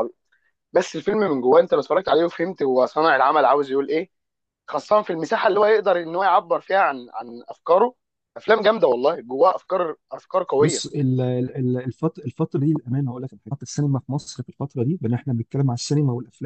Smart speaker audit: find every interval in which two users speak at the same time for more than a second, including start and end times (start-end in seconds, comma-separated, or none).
none